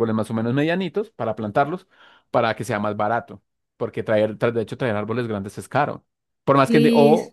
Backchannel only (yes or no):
yes